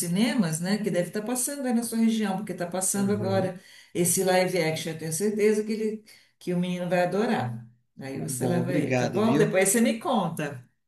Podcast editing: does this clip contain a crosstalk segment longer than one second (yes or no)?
yes